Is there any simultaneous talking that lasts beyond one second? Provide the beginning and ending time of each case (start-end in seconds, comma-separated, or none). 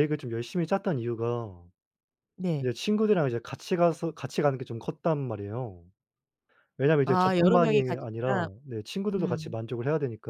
7.0-8.5